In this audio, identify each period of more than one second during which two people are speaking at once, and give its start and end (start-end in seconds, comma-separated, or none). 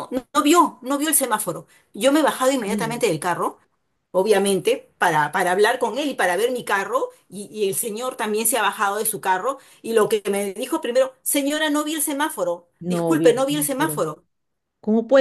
12.8-14.0